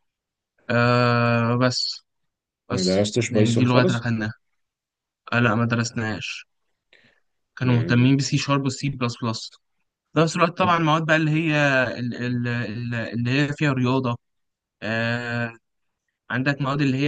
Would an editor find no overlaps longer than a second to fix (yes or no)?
no